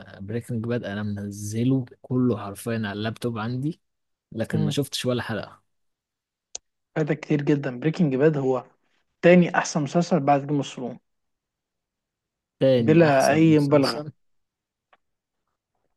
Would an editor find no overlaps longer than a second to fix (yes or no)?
no